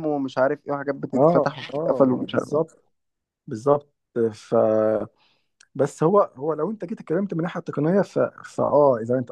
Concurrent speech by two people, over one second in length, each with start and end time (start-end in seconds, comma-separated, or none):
1.1-2.5